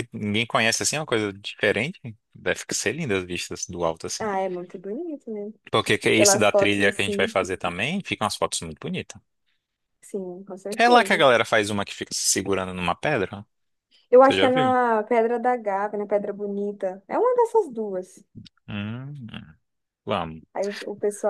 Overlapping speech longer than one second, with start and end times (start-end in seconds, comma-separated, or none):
6.1-7.4